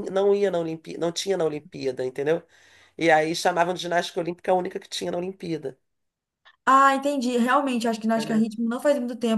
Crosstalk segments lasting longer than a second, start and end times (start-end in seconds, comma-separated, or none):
none